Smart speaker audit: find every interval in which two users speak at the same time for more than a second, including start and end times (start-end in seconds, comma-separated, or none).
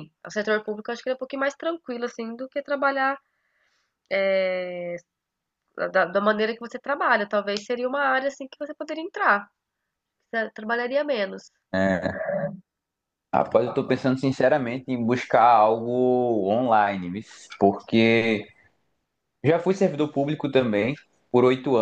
none